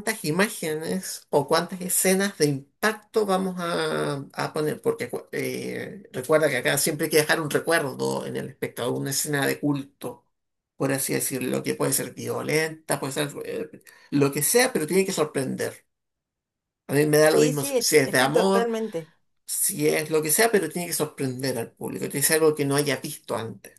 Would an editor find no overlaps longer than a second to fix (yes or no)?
no